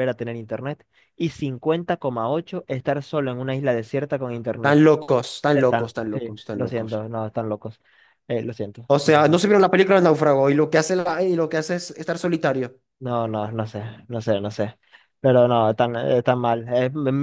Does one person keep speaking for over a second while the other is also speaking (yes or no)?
yes